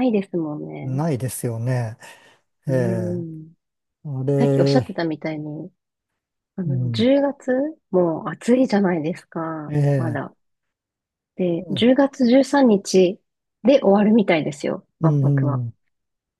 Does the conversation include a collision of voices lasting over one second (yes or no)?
no